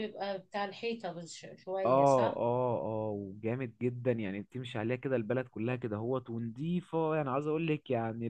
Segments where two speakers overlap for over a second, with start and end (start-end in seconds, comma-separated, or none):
none